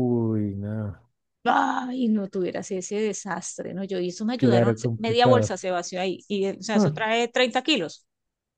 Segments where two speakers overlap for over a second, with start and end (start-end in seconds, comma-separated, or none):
4.3-5.6